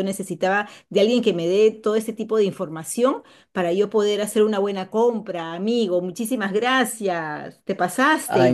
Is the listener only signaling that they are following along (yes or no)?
no